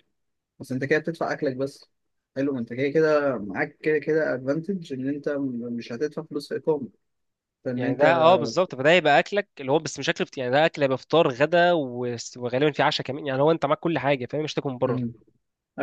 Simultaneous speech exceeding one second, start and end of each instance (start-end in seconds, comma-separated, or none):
none